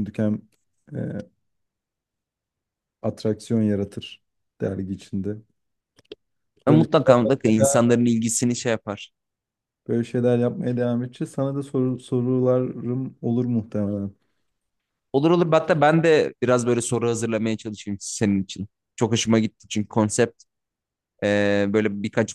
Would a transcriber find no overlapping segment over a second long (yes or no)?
no